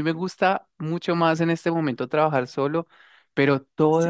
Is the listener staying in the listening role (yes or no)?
yes